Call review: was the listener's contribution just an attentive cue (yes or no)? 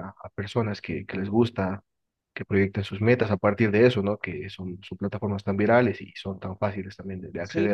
no